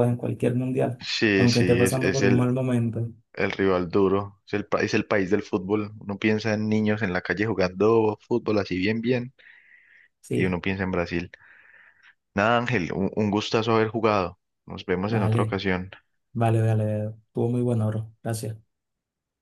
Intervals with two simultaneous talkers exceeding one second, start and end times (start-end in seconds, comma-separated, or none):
1.0-2.5